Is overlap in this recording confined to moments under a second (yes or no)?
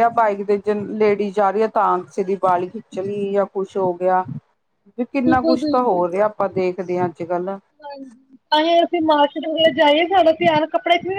yes